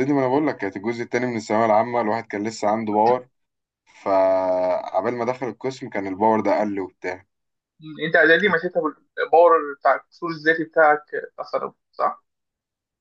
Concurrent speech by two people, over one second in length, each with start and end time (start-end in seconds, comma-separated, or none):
none